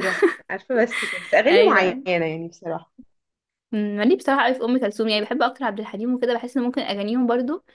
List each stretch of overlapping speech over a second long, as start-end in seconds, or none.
none